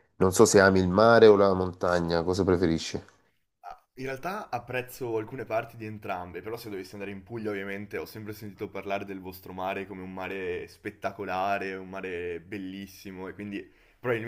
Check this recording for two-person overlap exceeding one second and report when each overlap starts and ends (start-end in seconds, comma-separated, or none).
none